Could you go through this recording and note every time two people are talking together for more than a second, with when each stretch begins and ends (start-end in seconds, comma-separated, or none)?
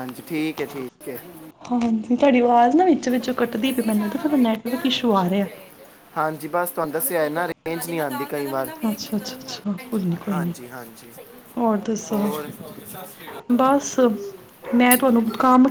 none